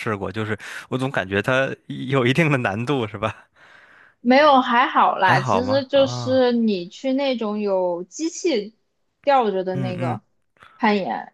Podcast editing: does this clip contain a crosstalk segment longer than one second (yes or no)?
yes